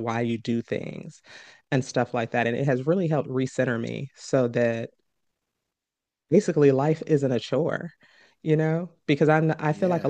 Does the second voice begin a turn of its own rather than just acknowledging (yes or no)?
no